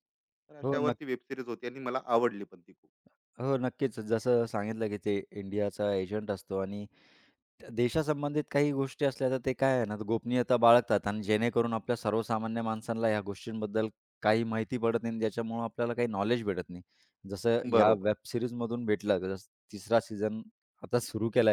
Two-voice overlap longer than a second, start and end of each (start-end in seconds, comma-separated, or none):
none